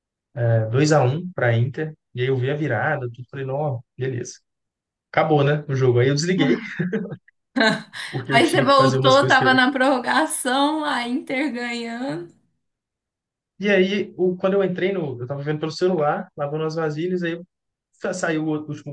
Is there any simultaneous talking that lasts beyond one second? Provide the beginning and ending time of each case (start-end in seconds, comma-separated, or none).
8.3-9.6